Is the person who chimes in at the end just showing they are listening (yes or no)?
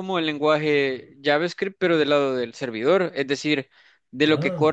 yes